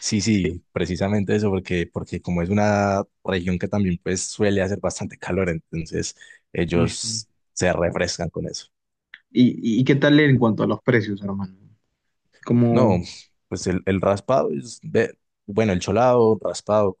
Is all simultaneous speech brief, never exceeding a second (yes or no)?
yes